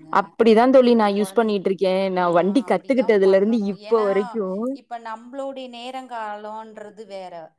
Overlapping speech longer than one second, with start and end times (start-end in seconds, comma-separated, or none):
2.2-4.1